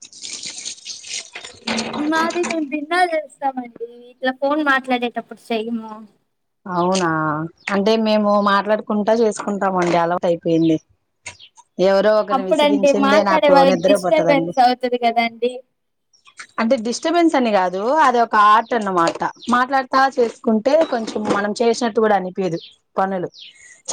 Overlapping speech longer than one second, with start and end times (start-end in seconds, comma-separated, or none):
12.3-14.5